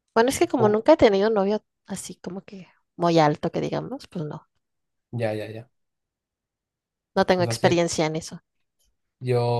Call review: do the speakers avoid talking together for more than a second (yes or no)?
yes